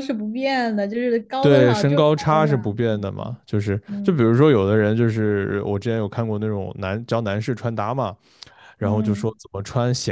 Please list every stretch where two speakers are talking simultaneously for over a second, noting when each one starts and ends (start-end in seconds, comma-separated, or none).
1.4-3.1